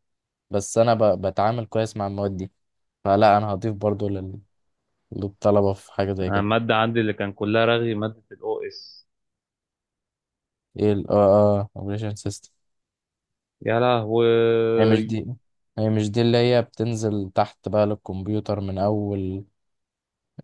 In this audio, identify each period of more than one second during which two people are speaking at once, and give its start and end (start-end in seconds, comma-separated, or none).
none